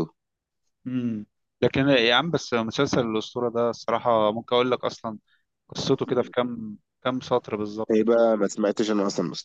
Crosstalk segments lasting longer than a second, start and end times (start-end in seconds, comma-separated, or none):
none